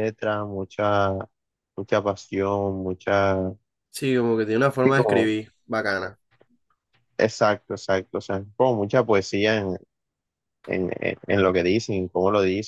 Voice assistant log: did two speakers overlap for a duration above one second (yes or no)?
no